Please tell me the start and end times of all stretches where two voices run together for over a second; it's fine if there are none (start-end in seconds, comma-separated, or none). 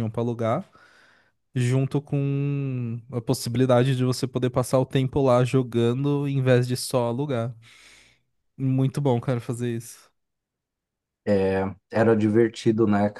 none